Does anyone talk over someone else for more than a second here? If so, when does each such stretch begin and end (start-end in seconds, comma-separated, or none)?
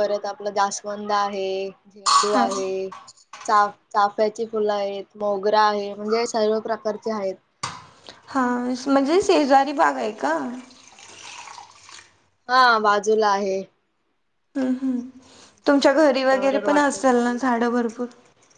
15.7-17.4